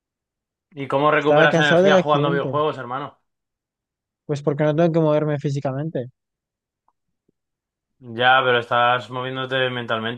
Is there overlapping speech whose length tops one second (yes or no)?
yes